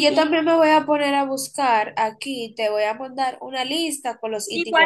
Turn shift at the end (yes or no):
yes